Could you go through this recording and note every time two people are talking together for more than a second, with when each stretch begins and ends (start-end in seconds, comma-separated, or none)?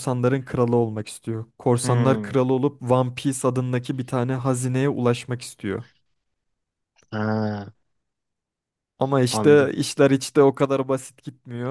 none